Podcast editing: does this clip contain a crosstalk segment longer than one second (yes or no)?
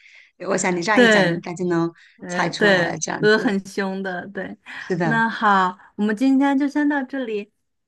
yes